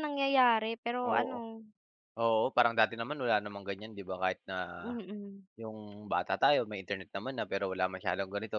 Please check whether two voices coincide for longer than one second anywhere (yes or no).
no